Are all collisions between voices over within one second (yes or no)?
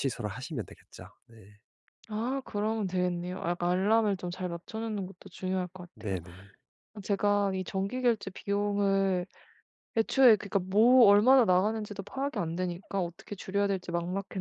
yes